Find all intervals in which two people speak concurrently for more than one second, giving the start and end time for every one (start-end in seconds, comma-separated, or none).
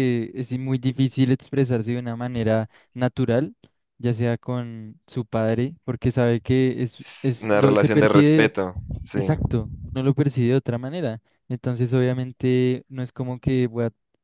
7.0-8.5